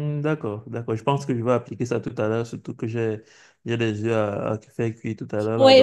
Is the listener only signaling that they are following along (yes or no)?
no